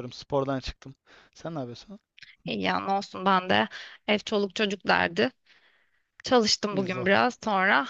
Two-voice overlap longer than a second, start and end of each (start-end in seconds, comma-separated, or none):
none